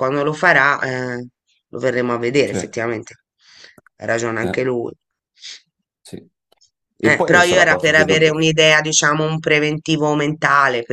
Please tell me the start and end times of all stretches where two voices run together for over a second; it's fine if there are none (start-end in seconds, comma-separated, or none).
7.0-8.4